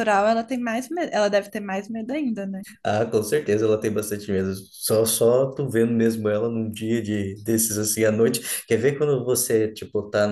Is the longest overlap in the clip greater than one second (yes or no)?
no